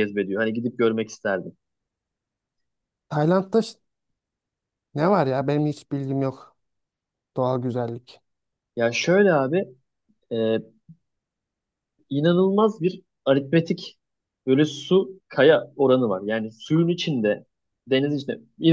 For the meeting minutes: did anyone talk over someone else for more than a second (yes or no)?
no